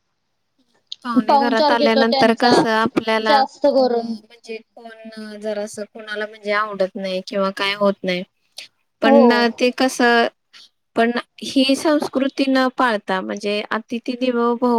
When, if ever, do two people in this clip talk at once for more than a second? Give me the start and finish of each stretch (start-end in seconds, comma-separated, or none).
1.3-2.6